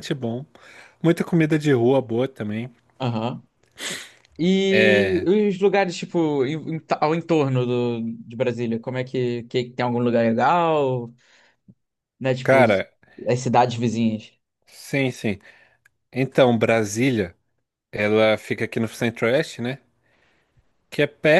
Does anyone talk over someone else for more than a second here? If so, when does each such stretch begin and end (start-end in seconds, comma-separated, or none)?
none